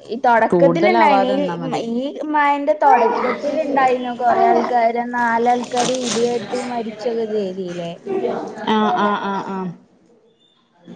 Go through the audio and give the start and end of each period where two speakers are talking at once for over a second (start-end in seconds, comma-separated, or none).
0.5-1.8